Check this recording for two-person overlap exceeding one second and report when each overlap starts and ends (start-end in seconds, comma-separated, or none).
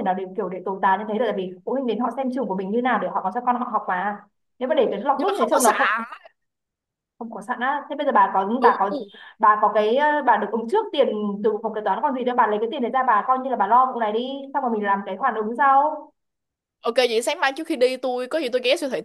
none